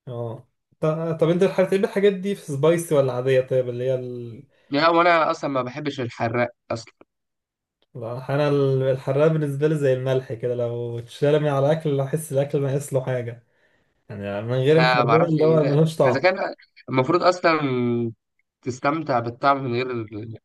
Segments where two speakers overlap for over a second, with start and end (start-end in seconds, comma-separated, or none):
14.7-16.3